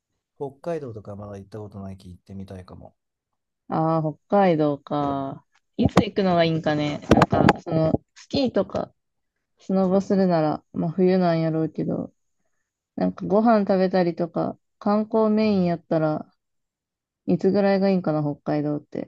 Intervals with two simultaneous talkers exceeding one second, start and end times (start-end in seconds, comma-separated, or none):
none